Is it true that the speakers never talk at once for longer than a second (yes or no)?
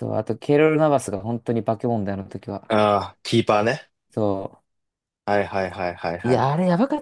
yes